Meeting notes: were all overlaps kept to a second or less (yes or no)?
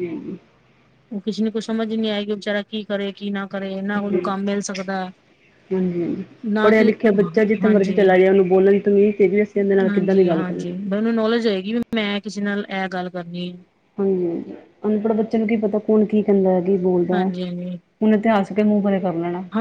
yes